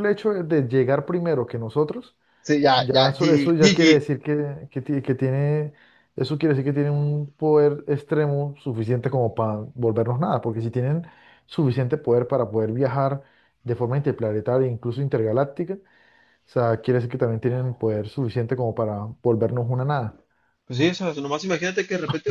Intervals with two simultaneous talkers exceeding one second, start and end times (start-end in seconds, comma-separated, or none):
2.8-4.0